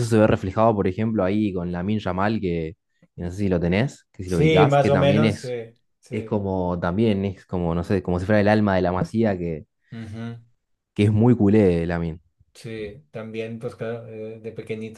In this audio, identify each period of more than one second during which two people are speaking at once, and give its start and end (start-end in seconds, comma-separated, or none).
4.2-5.5